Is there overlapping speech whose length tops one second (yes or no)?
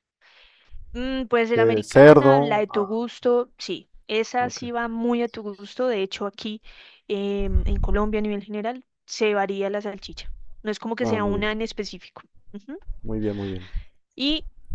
yes